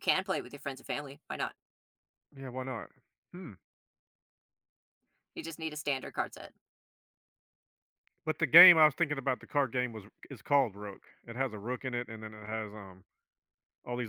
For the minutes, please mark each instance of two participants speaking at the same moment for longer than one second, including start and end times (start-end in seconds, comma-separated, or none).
none